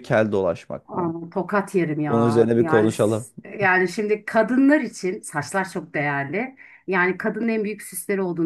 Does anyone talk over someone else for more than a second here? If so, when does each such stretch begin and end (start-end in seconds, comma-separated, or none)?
2.1-3.3